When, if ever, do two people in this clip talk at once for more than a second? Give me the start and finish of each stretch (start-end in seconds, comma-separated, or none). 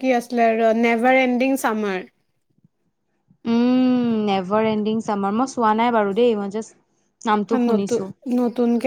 none